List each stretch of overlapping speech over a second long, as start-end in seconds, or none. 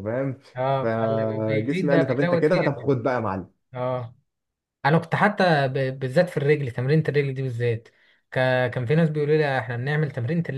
0.8-2.8